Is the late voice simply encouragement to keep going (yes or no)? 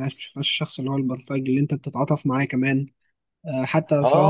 no